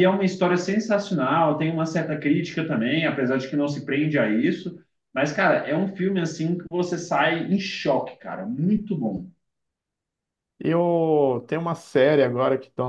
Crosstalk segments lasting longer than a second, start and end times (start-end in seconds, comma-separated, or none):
none